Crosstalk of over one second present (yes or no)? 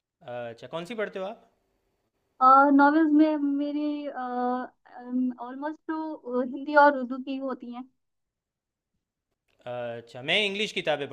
no